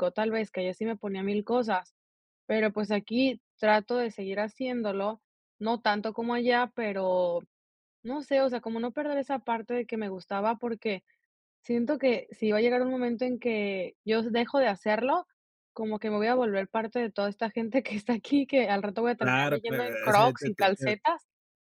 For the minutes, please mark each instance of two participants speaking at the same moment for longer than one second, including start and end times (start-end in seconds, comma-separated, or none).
19.2-21.0